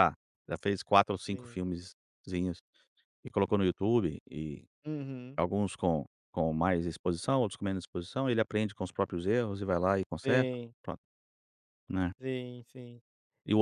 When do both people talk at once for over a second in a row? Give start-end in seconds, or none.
none